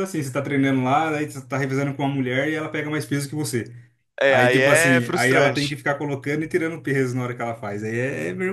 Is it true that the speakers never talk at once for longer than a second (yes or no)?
no